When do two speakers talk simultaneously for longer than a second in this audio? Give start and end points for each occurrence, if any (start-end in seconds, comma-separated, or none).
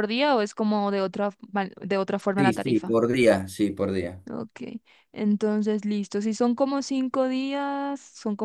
none